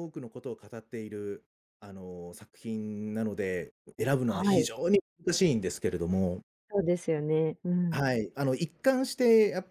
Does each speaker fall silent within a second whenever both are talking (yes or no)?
yes